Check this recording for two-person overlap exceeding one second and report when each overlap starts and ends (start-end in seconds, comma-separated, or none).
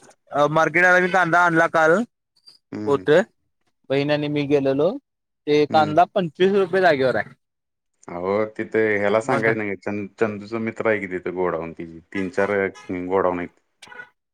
none